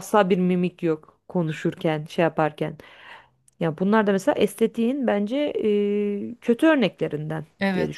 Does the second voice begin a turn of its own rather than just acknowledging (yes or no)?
yes